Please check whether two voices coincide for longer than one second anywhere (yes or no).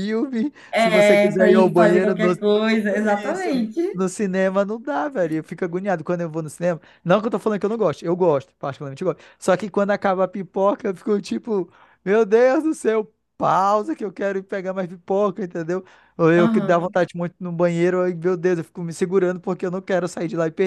yes